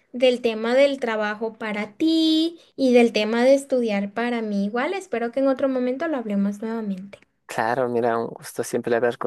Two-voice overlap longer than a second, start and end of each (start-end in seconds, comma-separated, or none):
none